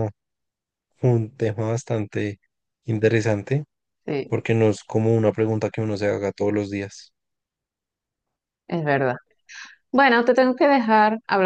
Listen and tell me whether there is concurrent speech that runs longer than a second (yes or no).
no